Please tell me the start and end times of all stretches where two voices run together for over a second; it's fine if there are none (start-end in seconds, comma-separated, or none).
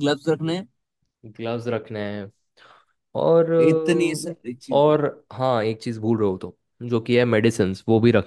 3.7-5.0